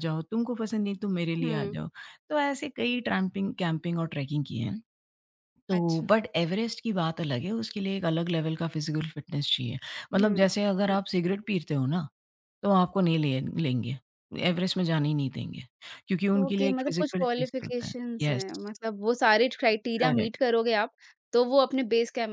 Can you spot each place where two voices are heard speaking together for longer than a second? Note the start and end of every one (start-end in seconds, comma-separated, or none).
16.4-18.4